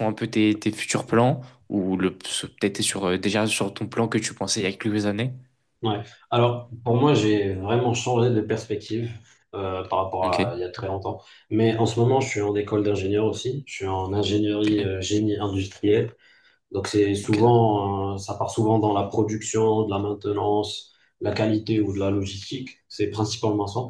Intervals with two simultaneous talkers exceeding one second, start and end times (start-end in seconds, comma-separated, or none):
none